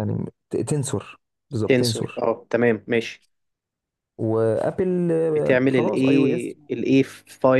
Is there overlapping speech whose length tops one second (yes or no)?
yes